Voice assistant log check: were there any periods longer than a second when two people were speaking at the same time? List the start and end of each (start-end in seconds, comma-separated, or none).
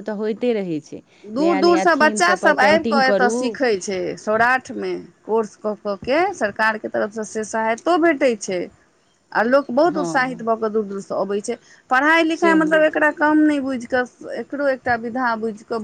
1.4-3.3